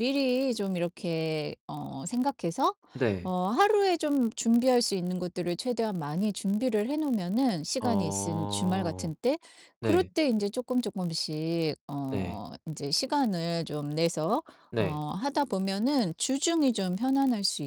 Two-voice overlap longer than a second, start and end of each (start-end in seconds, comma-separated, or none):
7.8-9.1